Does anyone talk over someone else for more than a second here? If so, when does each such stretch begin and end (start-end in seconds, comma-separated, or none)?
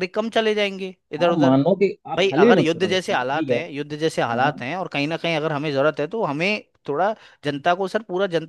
2.2-3.6